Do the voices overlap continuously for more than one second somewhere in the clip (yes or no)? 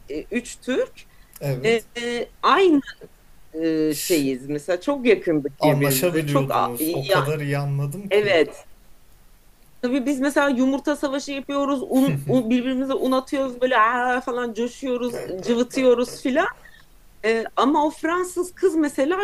yes